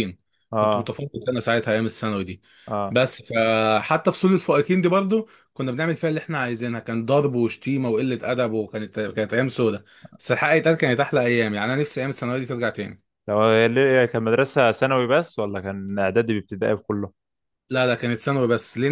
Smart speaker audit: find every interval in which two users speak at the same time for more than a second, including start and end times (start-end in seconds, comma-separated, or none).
none